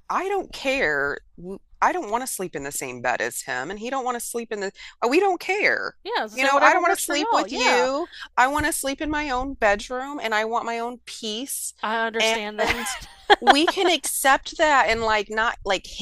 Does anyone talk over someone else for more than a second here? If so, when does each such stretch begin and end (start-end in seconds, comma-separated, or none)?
6.3-7.9